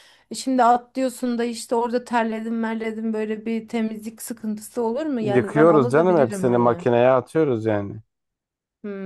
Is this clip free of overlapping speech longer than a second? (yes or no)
no